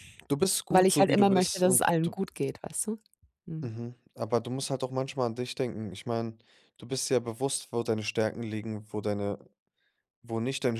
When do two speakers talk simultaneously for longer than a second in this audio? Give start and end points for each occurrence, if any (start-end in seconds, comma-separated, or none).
0.7-2.1